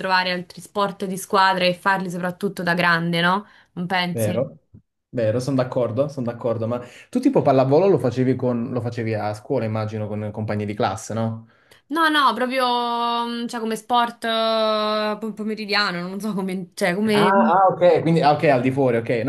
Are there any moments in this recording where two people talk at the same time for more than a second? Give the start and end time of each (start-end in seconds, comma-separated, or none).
none